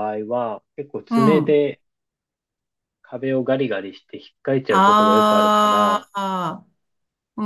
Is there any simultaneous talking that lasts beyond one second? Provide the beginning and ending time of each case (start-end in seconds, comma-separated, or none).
4.7-6.1